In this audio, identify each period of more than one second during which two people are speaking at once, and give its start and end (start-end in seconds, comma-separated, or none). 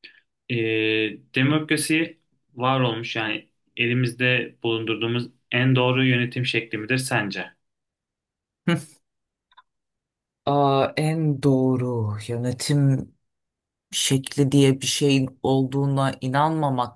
none